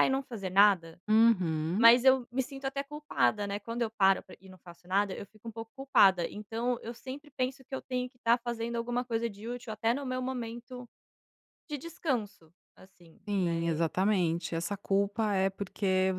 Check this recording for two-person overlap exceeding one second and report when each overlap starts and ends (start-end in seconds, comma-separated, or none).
none